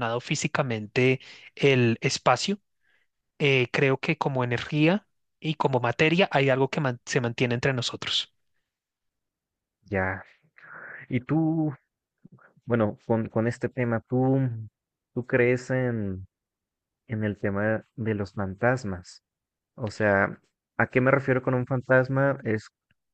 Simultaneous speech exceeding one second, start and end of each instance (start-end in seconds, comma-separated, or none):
none